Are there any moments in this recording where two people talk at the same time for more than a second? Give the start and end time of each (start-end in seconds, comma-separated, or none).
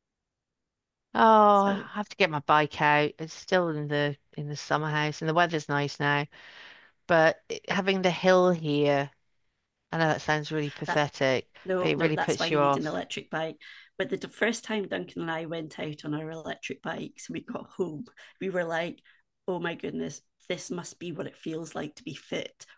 11.6-13.0